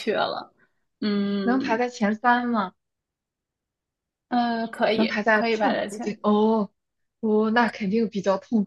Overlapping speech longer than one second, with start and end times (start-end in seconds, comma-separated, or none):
4.9-6.2